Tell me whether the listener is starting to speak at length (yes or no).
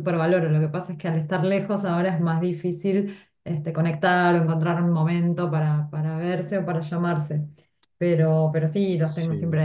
no